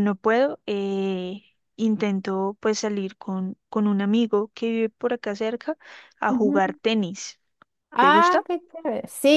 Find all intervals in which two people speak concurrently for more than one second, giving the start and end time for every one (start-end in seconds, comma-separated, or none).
none